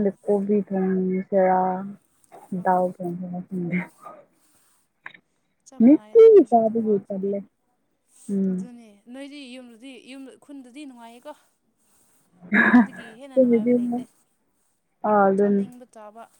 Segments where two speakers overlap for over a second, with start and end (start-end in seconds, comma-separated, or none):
5.8-7.3